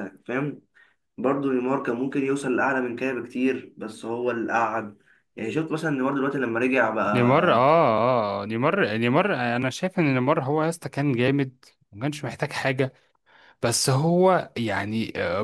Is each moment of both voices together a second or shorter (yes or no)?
yes